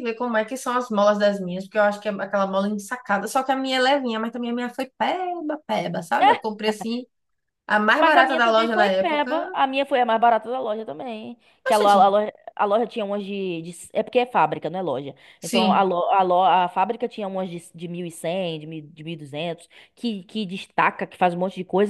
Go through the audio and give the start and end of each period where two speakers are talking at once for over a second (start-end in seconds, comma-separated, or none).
8.0-9.6